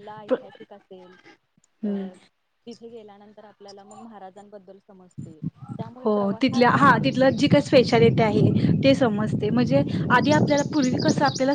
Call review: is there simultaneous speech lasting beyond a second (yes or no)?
no